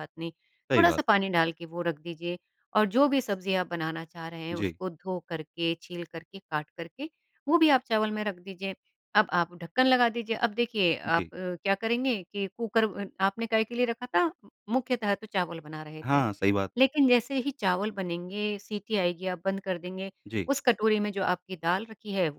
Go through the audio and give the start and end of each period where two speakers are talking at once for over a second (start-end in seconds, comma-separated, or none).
none